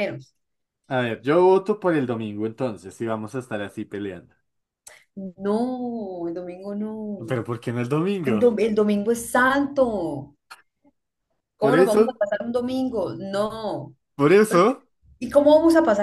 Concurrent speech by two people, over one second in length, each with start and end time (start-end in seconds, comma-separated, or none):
none